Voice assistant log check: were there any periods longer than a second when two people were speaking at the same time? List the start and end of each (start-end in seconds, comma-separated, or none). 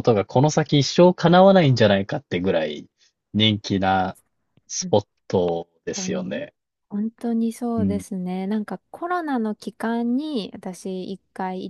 none